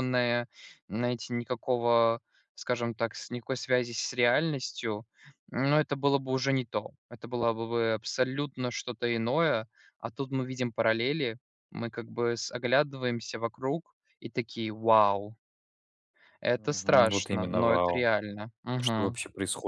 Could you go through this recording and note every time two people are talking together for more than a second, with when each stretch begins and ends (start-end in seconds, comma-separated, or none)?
16.6-18.1